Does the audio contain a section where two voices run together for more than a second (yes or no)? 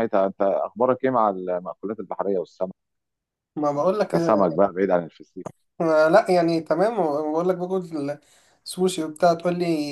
no